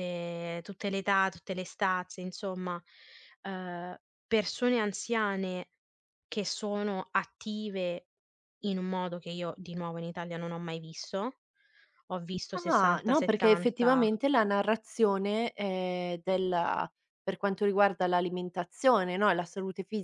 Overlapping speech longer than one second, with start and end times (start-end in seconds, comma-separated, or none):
12.7-14.1